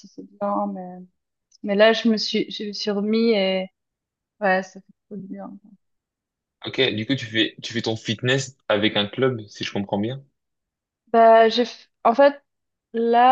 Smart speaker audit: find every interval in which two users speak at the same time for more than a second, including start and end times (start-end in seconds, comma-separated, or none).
none